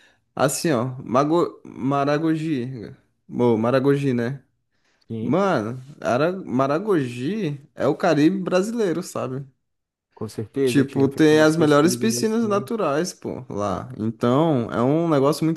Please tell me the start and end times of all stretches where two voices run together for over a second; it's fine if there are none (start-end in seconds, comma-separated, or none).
10.6-12.7